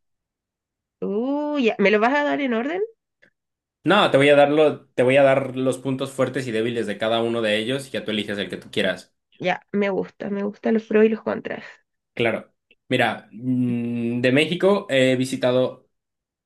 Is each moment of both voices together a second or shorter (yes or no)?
yes